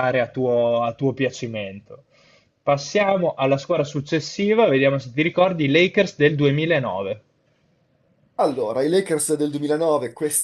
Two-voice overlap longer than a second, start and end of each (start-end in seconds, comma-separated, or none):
none